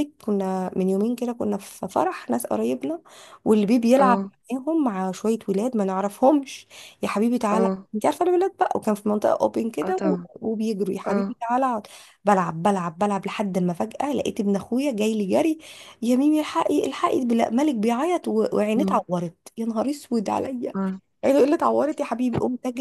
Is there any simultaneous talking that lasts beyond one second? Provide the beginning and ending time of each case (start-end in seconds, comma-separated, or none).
none